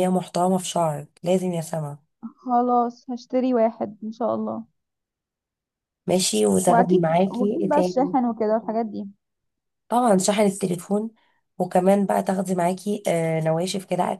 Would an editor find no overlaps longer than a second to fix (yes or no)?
no